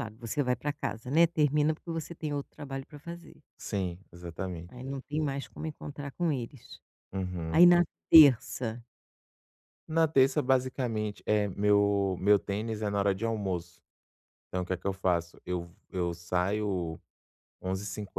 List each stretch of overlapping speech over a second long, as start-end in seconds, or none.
none